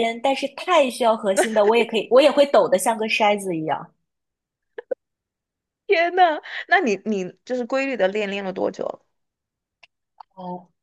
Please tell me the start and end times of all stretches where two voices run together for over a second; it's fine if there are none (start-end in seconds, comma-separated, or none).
none